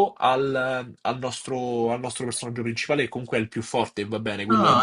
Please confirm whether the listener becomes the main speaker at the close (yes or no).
yes